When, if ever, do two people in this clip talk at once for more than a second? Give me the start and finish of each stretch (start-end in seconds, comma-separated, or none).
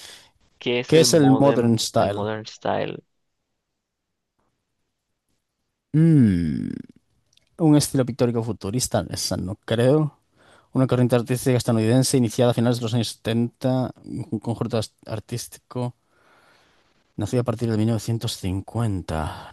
0.8-2.3